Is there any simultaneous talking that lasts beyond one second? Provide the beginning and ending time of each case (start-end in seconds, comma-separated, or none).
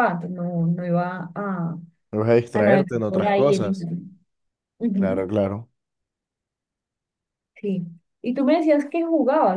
2.5-3.9